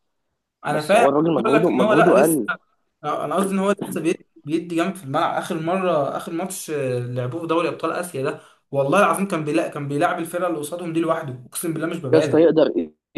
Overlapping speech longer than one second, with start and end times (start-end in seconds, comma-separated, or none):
0.7-2.4